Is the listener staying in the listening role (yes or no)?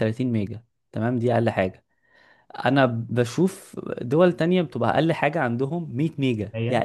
no